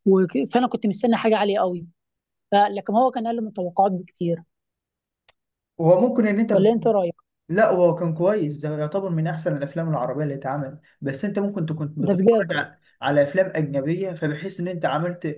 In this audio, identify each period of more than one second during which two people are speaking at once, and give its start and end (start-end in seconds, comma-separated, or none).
none